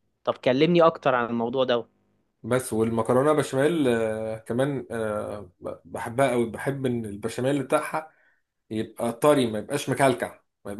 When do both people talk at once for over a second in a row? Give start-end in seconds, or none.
none